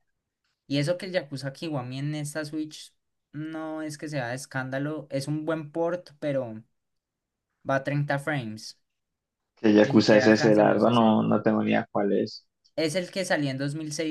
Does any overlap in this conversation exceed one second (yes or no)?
yes